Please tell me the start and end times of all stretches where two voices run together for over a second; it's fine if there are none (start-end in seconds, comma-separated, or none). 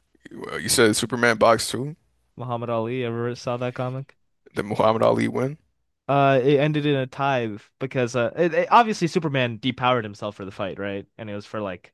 none